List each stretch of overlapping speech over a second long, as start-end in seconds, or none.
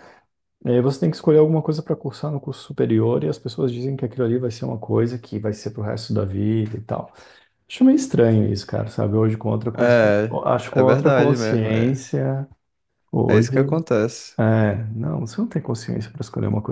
9.8-12.1